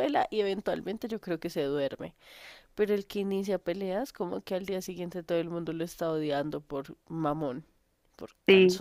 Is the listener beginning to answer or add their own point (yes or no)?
yes